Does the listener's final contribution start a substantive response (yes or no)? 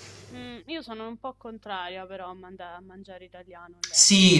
yes